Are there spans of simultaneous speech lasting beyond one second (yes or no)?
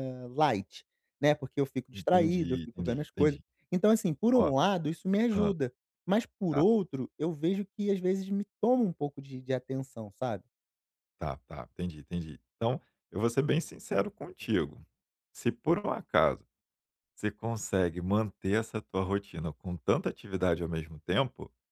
yes